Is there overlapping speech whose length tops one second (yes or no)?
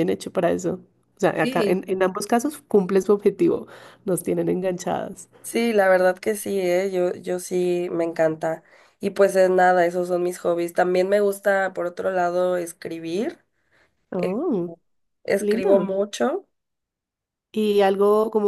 no